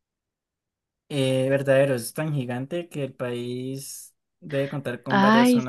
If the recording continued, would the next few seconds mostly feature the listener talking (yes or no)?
yes